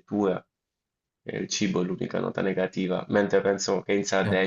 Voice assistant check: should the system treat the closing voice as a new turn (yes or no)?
yes